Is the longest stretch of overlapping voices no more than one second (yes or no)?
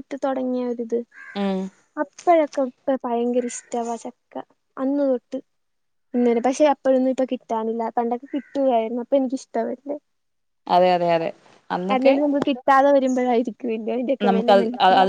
yes